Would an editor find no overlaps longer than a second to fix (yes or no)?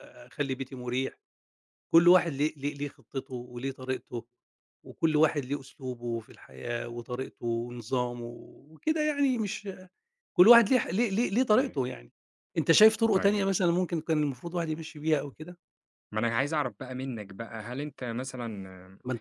yes